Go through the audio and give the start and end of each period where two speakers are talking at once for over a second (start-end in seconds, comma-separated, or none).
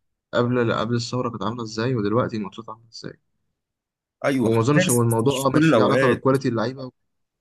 4.4-6.4